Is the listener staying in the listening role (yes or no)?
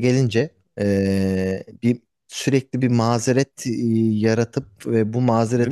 yes